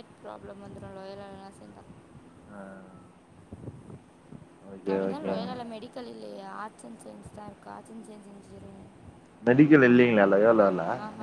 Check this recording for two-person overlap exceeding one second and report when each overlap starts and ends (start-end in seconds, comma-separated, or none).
none